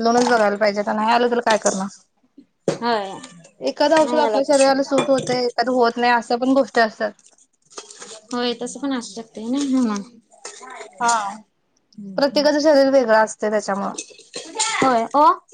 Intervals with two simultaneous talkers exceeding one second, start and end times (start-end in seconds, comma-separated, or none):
none